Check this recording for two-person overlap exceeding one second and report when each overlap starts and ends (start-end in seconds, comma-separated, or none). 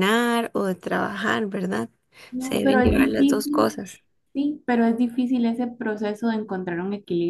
2.4-3.7